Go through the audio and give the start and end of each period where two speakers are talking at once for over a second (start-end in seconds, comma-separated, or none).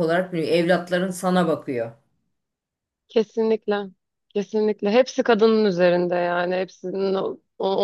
none